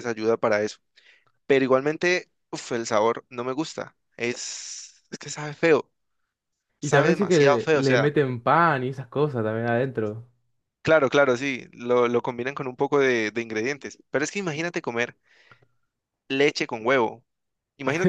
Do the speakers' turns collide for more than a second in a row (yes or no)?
yes